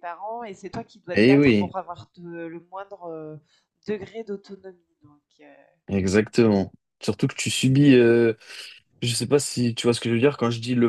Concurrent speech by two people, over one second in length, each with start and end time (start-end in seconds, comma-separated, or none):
none